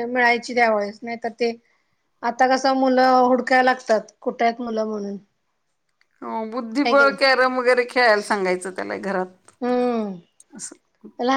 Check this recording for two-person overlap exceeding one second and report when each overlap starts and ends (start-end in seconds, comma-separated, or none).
none